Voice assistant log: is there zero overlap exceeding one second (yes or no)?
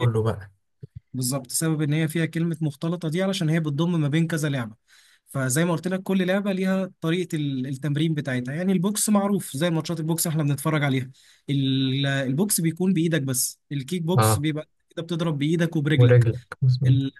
yes